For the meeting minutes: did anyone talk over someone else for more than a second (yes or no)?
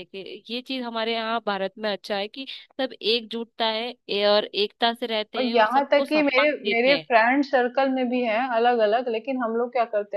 yes